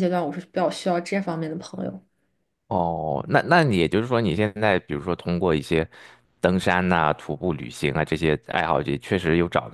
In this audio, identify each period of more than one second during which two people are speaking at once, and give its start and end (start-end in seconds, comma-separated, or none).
none